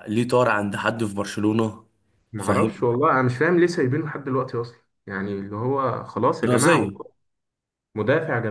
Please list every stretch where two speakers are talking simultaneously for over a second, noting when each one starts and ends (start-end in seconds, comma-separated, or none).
none